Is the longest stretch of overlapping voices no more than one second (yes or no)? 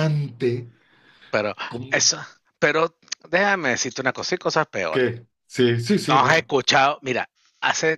yes